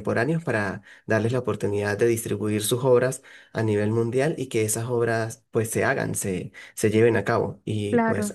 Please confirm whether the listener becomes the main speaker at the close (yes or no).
no